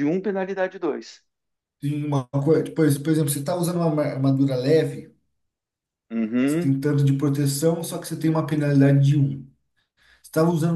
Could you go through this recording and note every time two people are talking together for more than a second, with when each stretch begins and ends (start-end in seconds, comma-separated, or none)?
none